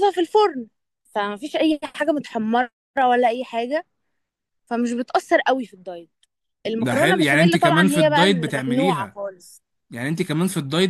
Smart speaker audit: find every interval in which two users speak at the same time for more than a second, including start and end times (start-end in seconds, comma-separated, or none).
6.8-9.2